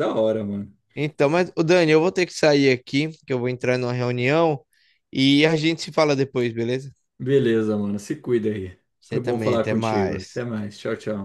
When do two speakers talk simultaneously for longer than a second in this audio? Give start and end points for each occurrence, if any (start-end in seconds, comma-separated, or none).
9.0-10.5